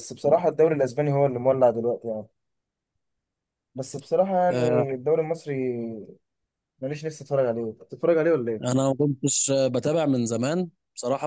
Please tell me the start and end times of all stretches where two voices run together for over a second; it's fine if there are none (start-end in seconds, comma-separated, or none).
none